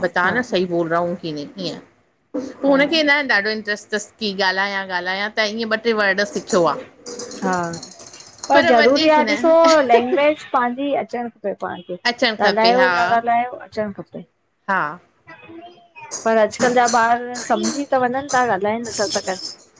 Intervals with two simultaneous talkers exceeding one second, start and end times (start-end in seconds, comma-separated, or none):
none